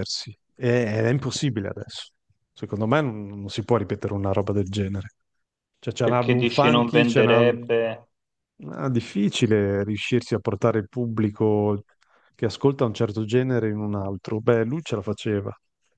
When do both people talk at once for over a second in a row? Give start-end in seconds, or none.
6.0-7.5